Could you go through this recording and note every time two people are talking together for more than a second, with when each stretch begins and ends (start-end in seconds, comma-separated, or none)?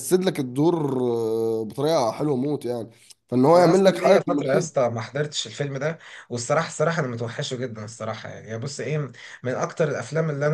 3.5-4.8